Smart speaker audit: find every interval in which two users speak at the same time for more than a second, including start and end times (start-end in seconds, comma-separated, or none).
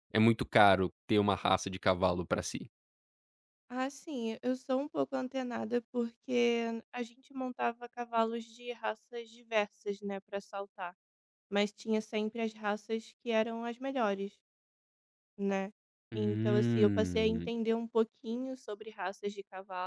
16.1-17.5